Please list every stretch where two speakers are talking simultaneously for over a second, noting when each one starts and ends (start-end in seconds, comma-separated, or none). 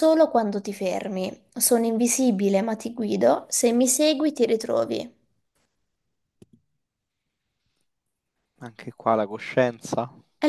none